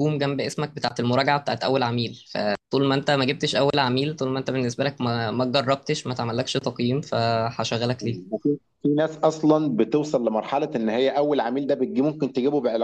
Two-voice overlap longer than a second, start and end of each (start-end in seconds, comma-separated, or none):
none